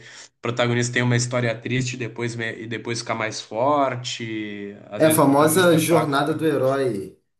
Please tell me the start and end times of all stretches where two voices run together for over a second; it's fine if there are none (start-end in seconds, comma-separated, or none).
5.0-6.4